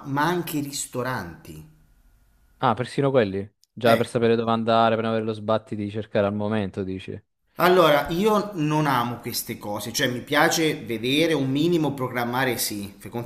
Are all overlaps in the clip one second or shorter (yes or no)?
yes